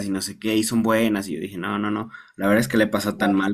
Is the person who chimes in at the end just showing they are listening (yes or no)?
yes